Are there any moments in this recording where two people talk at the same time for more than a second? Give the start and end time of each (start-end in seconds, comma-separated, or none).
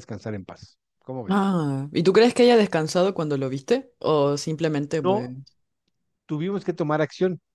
none